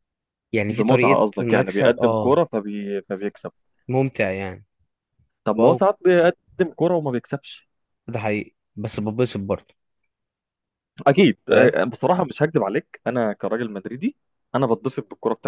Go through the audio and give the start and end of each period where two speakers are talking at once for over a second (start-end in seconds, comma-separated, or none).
0.7-2.4